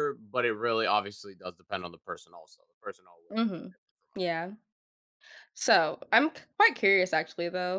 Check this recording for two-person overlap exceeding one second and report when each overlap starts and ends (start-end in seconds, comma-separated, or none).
none